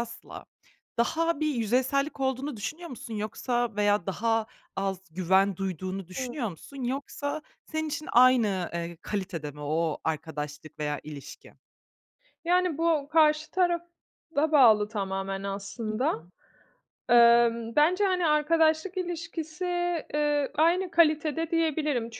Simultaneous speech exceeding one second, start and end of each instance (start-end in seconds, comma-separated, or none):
none